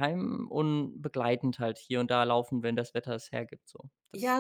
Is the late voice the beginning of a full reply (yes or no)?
yes